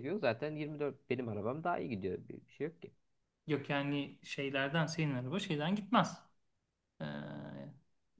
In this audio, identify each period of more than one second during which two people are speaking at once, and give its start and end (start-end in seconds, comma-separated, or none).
none